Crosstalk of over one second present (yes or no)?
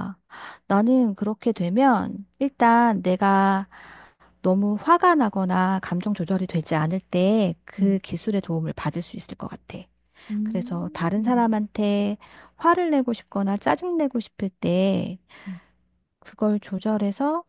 yes